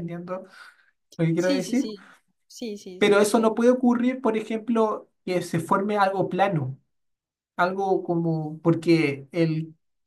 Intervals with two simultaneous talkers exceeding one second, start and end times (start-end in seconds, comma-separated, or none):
none